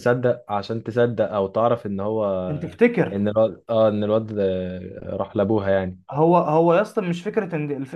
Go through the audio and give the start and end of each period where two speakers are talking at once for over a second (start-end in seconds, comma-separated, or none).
none